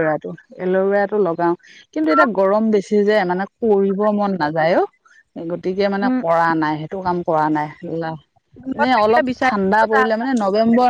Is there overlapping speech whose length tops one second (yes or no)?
yes